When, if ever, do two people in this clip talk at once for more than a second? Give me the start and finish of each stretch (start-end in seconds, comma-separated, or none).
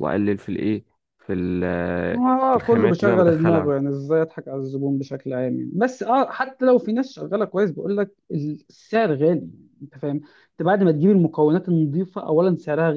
2.1-3.7